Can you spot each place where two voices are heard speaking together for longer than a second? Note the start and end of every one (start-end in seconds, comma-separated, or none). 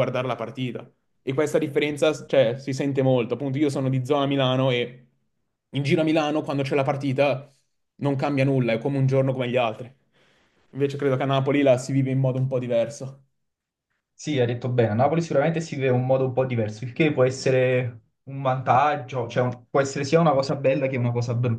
none